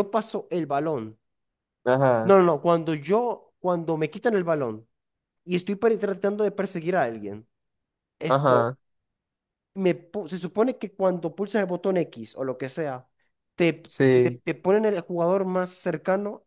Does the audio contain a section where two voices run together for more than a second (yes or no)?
no